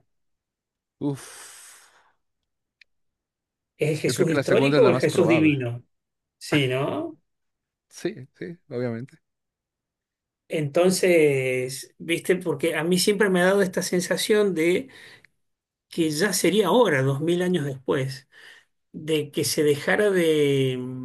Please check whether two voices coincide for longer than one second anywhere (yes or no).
yes